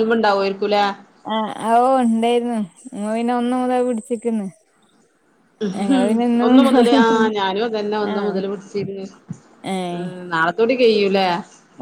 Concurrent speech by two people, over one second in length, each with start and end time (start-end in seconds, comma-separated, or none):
none